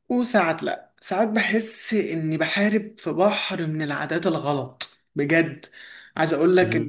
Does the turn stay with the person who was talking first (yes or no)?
yes